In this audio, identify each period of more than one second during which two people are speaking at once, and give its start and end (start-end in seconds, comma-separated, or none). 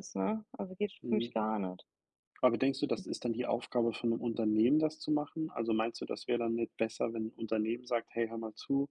none